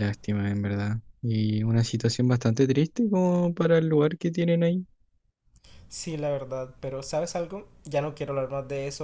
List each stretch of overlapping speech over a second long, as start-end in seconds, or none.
none